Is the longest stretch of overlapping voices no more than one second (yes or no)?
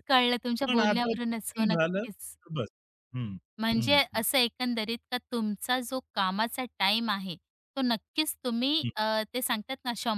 no